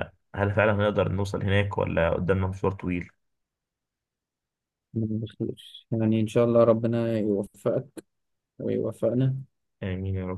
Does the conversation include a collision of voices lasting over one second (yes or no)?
no